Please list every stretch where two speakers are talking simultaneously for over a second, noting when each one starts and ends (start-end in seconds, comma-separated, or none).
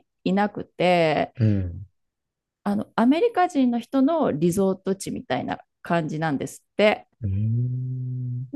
none